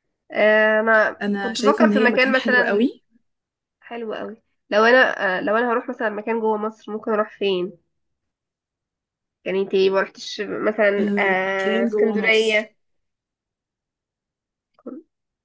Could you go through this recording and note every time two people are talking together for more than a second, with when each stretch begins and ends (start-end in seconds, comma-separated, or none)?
1.2-2.9, 11.0-12.7